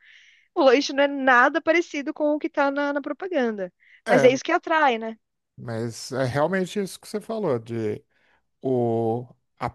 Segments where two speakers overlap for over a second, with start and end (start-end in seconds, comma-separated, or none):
none